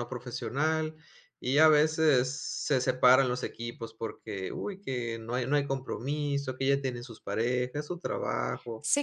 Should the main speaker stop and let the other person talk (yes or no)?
yes